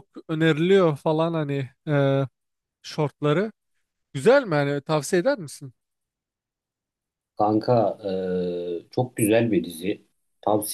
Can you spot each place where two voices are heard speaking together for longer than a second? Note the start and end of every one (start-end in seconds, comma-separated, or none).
none